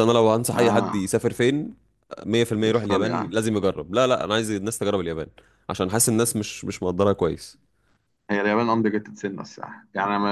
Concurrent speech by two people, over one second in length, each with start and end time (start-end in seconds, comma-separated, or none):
none